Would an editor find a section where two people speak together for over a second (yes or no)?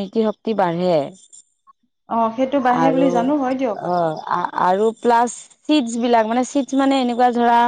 no